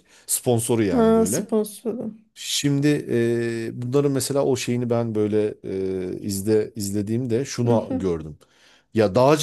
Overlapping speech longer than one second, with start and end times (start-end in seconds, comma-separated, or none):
none